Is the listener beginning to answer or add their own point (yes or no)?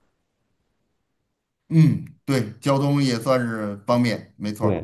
yes